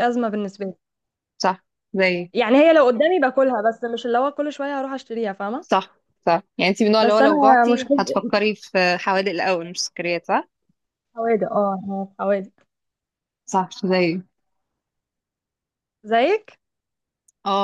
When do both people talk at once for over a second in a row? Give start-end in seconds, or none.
7.0-8.3